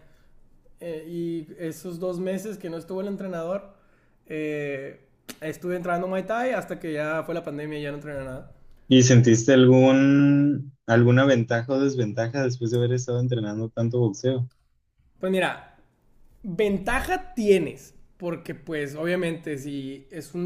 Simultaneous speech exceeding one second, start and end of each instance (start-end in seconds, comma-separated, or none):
none